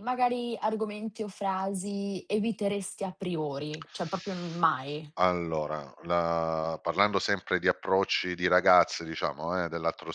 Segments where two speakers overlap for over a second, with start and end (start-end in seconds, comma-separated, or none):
none